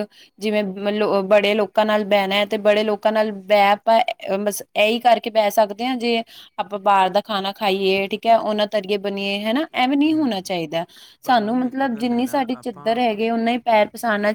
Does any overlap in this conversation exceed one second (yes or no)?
yes